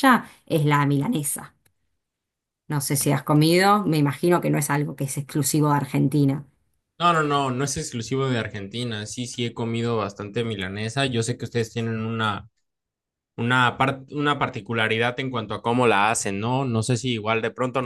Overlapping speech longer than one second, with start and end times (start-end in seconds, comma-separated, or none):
none